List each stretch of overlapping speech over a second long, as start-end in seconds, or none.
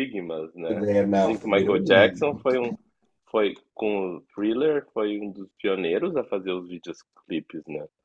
0.9-2.4